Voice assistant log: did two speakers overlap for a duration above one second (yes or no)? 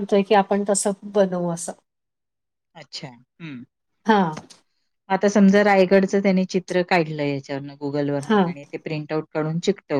no